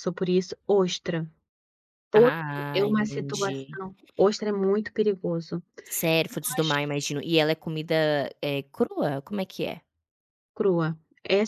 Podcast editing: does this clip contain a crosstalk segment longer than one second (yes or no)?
yes